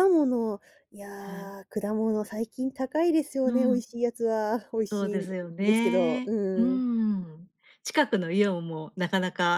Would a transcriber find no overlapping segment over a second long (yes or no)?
no